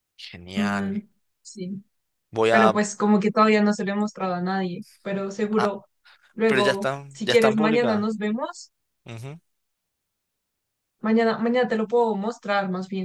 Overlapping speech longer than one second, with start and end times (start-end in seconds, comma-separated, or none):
6.5-8.1